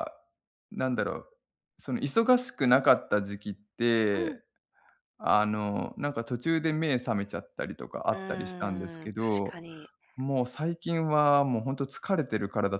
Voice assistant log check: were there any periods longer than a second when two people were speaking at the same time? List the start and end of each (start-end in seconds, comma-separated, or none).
8.1-9.6